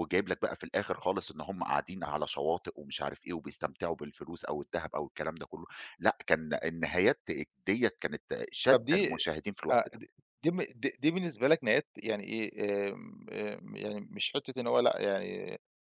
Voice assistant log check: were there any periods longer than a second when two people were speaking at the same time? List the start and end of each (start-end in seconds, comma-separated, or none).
none